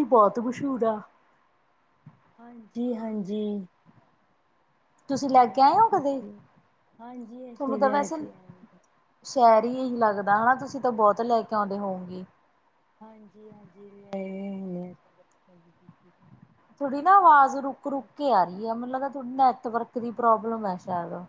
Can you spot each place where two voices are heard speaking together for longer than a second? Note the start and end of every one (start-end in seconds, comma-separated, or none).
none